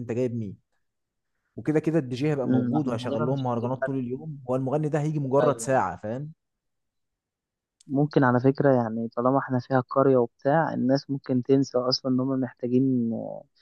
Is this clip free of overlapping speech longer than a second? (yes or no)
no